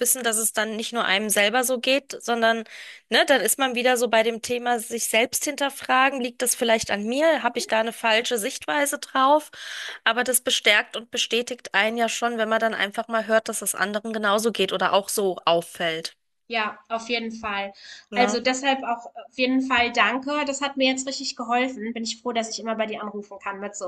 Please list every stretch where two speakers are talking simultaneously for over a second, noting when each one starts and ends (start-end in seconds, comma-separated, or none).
none